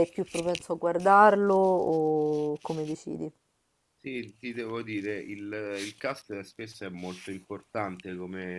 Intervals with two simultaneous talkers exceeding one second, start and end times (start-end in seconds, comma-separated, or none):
none